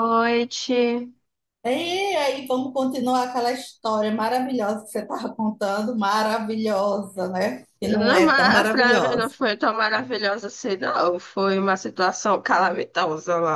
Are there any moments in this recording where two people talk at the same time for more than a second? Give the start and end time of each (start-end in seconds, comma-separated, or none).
7.8-9.3